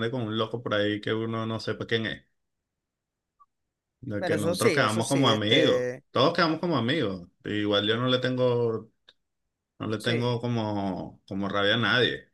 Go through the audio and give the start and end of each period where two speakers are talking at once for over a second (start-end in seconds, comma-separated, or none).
4.2-6.0